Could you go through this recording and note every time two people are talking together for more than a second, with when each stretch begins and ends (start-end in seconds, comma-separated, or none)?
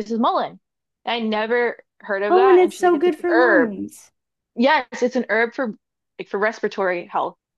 2.3-3.7